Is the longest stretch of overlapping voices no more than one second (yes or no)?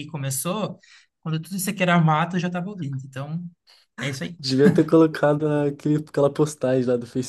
yes